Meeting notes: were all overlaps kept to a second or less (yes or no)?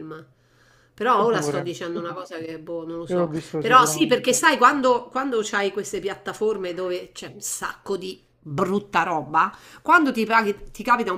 no